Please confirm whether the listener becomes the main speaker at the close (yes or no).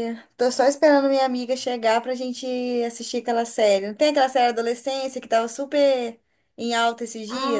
yes